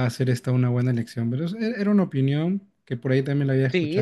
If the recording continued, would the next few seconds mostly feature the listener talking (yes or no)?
yes